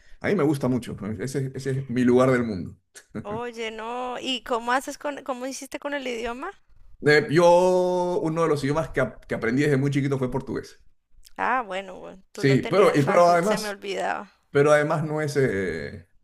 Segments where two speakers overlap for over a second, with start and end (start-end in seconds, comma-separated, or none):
12.3-13.8